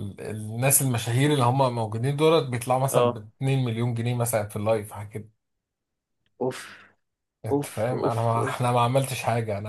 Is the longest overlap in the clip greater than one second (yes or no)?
yes